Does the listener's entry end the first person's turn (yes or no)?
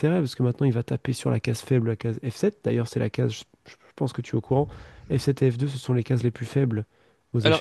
yes